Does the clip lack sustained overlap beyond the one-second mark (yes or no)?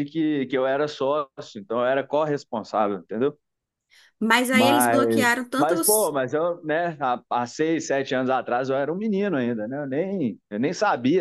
no